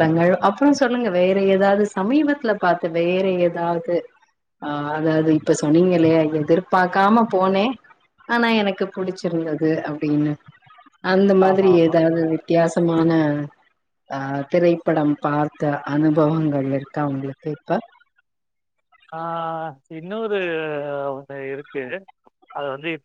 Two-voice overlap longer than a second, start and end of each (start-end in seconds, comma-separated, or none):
none